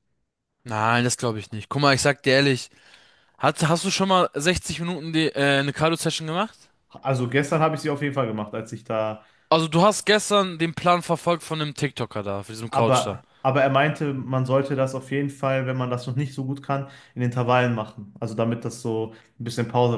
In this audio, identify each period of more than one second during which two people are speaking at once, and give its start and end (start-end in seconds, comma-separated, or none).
none